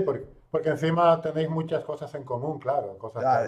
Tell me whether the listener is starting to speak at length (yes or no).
yes